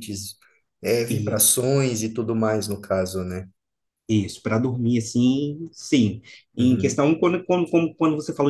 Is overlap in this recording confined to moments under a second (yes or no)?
yes